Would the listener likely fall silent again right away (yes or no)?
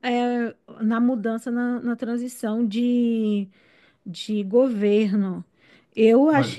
yes